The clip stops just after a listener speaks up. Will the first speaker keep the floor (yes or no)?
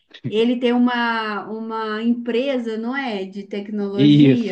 no